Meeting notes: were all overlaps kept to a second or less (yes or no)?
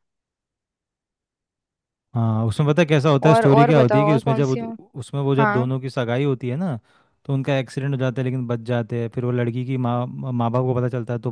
no